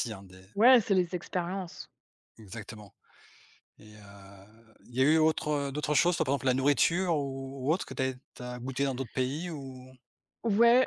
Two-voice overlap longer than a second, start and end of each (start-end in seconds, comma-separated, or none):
none